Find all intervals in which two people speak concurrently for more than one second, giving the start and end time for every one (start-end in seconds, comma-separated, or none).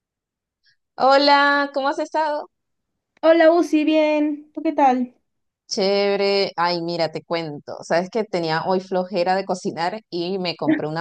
none